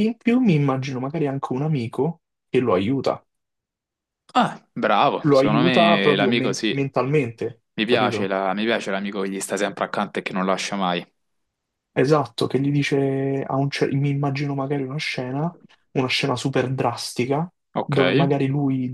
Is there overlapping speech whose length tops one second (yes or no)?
yes